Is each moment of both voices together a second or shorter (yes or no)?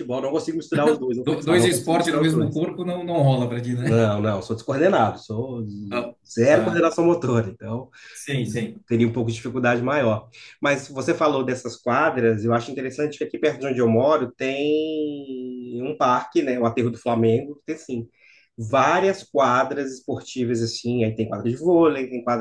no